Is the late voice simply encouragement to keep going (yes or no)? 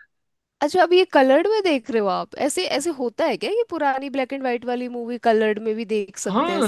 no